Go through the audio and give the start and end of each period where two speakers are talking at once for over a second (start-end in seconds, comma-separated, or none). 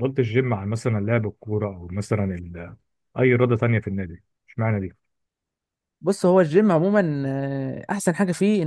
none